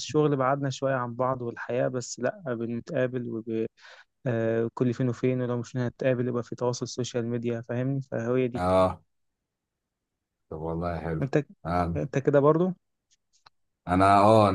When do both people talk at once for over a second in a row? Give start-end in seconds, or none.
none